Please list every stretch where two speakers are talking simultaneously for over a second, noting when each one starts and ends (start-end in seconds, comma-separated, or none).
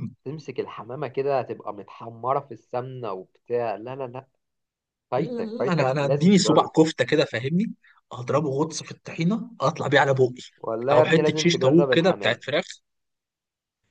5.2-6.7, 10.9-12.4